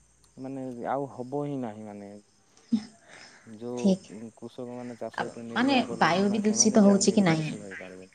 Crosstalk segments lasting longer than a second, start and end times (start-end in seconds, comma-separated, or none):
5.2-7.5